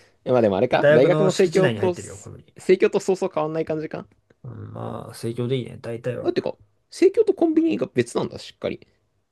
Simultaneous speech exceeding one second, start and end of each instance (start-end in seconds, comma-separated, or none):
0.7-1.9